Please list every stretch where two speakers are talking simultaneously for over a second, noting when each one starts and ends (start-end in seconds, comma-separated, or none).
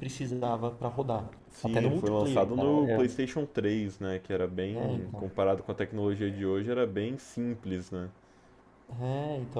1.5-3.2